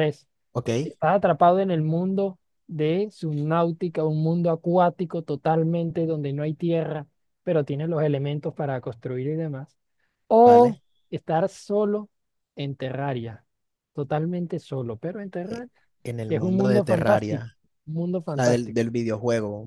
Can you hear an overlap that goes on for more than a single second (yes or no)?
yes